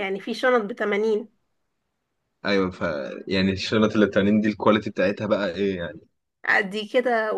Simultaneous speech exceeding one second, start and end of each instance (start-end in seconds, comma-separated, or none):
none